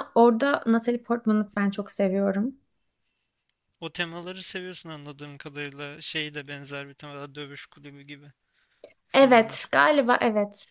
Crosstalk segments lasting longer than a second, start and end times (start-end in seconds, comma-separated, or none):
none